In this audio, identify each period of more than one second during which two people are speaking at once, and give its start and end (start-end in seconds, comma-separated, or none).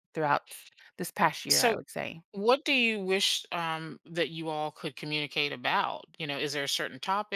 none